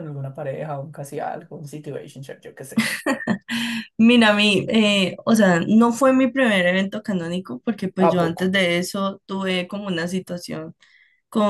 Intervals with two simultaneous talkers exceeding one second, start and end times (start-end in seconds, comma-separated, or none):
none